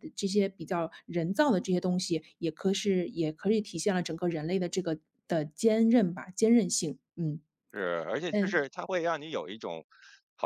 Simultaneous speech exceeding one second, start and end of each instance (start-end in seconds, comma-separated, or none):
none